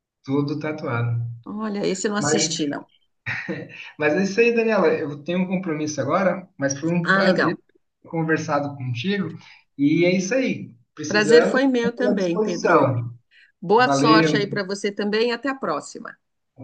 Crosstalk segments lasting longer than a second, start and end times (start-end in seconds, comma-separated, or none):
11.1-13.0